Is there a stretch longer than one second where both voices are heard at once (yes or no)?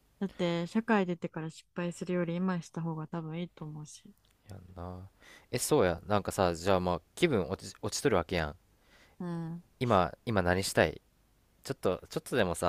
no